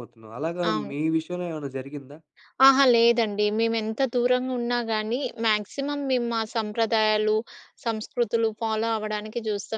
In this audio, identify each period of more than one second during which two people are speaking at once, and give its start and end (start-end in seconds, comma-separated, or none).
none